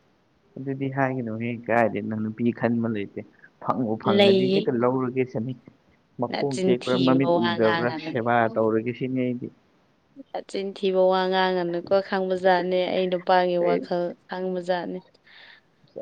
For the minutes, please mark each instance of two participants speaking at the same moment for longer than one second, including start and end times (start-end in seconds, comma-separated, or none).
6.3-8.1